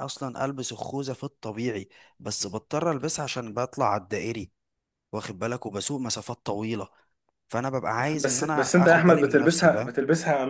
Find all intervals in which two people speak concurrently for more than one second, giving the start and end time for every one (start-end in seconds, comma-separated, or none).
8.2-9.9